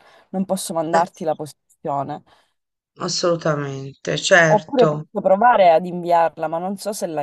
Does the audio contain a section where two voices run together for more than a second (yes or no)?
no